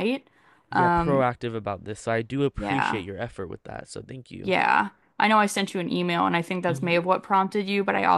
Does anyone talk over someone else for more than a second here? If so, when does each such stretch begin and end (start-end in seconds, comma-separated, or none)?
none